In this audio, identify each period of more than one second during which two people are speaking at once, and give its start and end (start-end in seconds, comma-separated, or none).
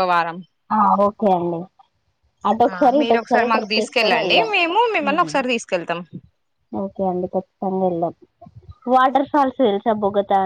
2.7-4.5